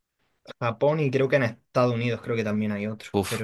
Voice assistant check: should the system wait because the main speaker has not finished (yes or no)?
no